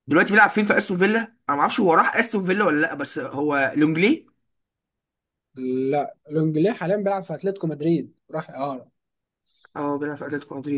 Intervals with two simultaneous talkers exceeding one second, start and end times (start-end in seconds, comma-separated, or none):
none